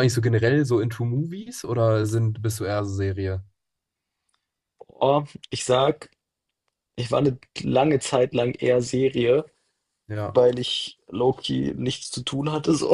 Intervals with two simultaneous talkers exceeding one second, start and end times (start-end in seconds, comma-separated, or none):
none